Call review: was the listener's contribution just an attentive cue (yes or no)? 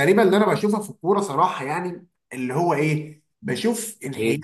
yes